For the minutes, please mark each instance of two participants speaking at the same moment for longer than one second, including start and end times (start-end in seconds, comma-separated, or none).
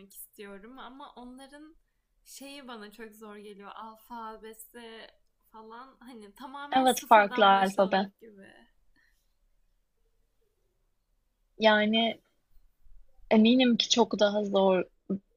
6.7-8.1